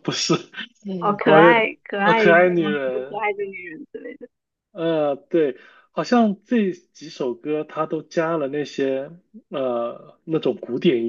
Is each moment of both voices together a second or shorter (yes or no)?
no